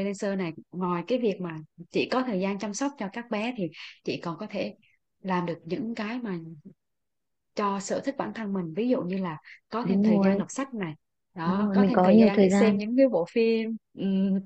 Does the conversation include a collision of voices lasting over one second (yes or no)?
yes